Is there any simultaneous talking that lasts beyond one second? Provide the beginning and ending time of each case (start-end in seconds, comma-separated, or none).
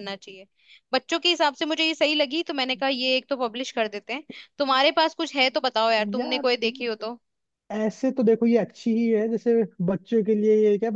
none